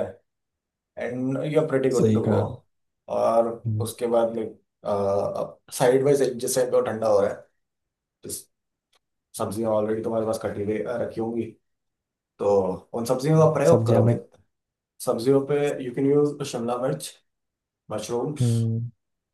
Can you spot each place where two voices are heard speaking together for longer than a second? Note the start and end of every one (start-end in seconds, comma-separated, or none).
none